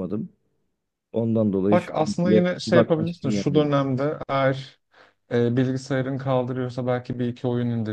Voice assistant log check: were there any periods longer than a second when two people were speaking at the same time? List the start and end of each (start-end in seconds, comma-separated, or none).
1.7-3.7